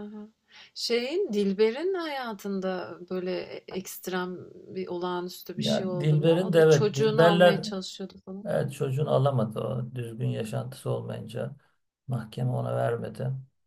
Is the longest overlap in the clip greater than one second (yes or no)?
yes